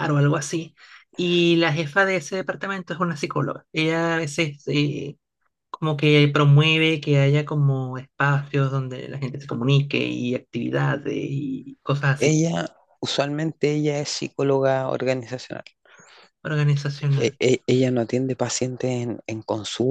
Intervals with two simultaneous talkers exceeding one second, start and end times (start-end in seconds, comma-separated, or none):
none